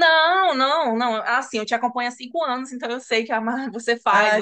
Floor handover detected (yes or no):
yes